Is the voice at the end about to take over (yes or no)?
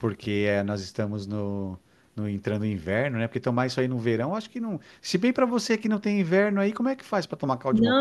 yes